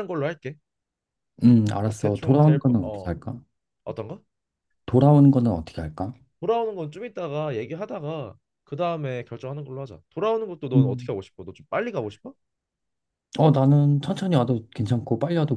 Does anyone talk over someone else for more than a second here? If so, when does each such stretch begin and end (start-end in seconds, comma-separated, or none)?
1.8-3.1